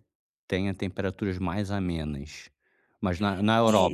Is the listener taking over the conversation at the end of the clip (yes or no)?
yes